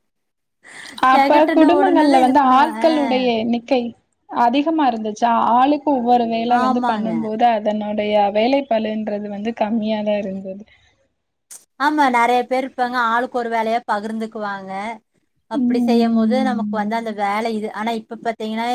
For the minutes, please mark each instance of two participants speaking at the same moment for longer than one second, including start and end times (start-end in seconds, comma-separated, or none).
15.7-17.1